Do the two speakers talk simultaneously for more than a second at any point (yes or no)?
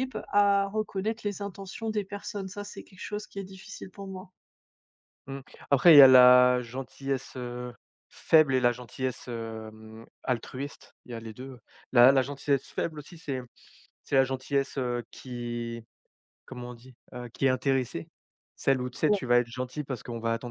no